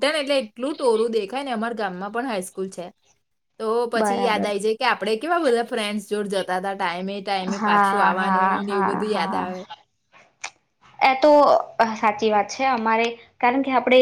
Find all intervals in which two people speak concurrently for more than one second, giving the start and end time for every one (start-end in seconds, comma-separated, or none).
7.6-9.4